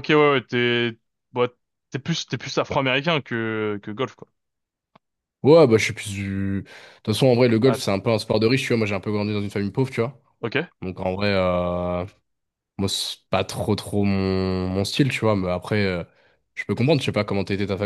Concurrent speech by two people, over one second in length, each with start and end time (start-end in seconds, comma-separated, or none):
none